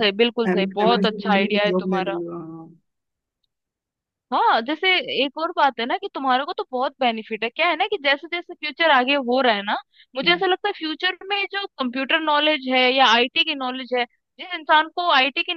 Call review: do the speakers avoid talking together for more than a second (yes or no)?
no